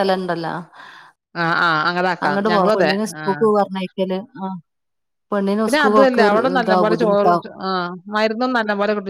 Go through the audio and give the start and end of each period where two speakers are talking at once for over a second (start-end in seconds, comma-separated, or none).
5.6-7.5